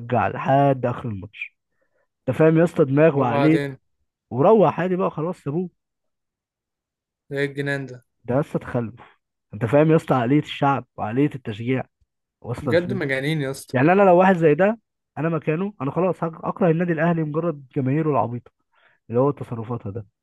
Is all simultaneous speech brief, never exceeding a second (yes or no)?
yes